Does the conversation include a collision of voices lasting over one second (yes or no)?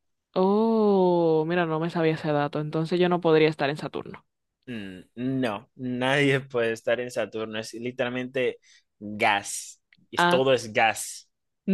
no